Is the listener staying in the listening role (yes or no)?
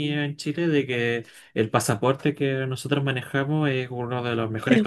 yes